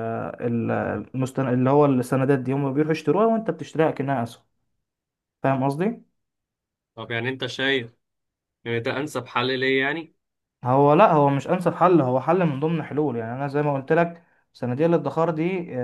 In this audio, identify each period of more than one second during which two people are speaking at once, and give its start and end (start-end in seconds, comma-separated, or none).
none